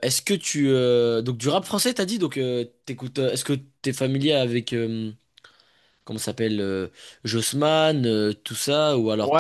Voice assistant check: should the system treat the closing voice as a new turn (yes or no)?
yes